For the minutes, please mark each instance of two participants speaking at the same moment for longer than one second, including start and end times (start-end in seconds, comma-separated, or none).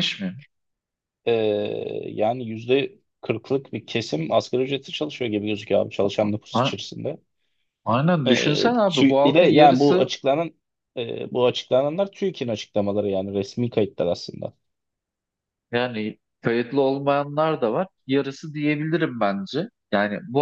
8.2-10.1